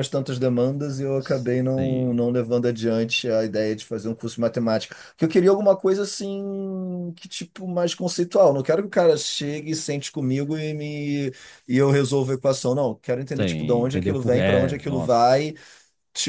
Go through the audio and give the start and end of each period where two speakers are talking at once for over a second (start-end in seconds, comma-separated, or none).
13.3-15.4